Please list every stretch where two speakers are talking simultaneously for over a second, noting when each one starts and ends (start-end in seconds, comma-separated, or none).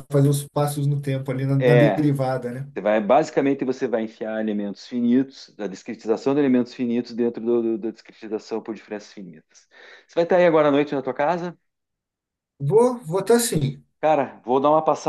none